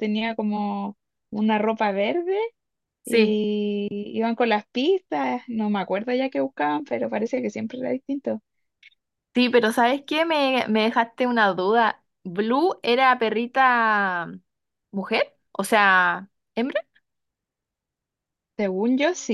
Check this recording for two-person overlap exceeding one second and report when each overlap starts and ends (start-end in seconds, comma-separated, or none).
none